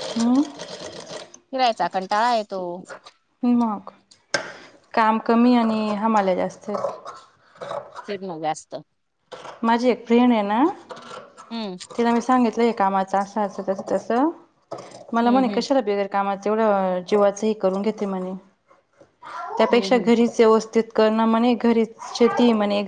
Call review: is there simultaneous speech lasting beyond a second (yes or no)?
no